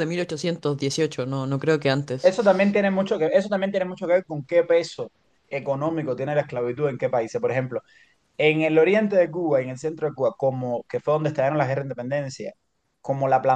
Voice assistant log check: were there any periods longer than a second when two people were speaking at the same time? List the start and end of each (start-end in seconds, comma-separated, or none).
none